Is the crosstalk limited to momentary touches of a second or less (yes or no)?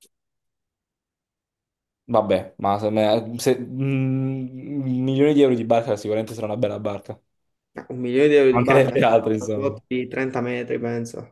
no